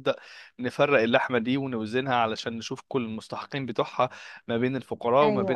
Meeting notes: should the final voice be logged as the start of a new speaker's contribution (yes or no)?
no